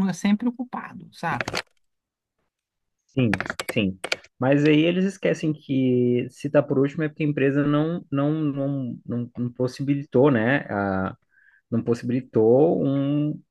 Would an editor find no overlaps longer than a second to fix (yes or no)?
yes